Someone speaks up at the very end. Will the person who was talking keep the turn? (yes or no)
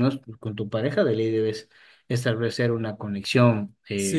no